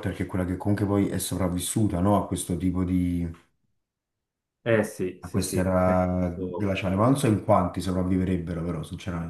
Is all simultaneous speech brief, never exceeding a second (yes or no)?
no